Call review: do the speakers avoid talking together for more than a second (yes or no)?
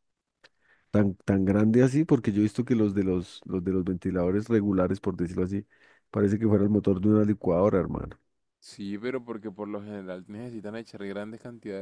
yes